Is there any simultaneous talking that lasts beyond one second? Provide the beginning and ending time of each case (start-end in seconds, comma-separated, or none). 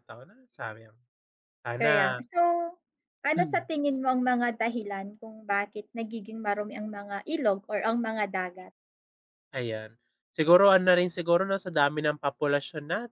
none